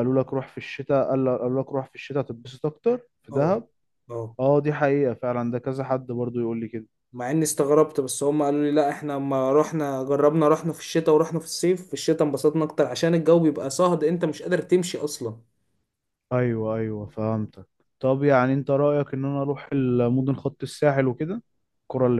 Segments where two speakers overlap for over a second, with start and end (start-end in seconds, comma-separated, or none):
none